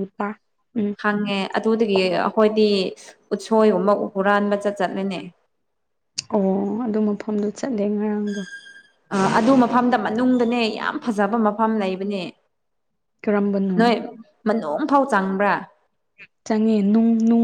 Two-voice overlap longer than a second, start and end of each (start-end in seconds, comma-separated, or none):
none